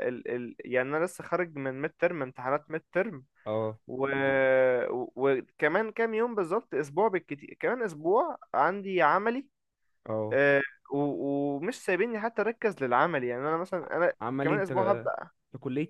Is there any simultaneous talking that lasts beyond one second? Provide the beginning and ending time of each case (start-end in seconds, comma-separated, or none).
none